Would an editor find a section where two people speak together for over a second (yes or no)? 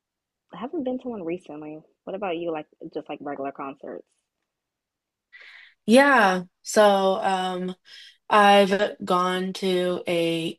no